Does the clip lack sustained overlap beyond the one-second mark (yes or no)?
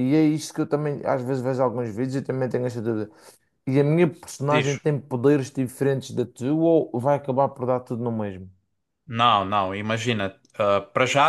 yes